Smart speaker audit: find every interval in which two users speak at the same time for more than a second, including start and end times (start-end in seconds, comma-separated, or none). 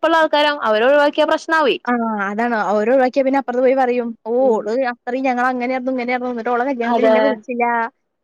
none